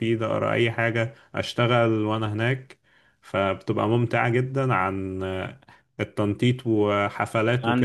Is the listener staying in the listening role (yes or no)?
yes